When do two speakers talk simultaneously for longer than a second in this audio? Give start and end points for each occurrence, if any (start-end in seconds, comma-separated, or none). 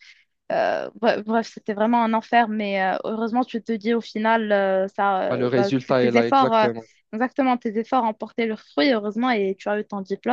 5.3-6.7